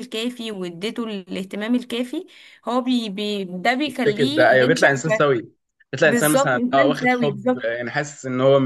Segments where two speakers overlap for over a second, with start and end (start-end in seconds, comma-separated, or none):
3.9-5.4, 6.0-7.8